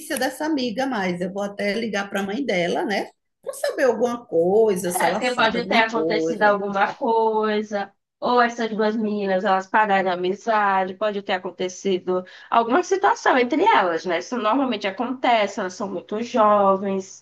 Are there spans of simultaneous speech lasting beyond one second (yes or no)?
yes